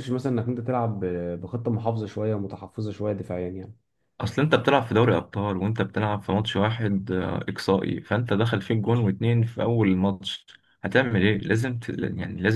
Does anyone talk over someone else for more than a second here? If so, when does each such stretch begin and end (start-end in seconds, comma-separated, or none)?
none